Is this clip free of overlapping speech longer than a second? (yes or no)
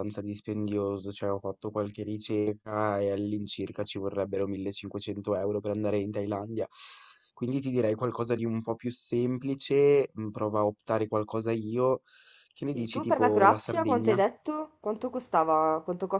no